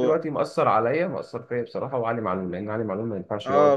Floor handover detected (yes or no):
yes